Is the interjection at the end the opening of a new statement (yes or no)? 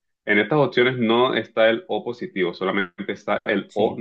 no